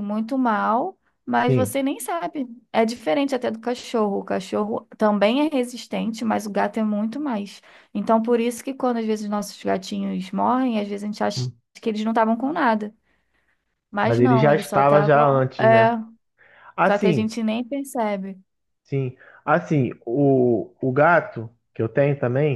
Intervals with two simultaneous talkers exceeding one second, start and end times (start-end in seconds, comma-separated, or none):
14.0-15.9